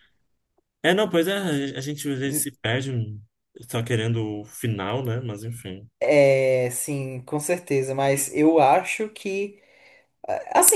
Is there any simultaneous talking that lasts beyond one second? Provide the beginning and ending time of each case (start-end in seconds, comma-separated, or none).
none